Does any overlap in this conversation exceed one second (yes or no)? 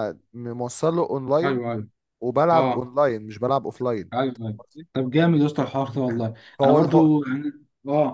no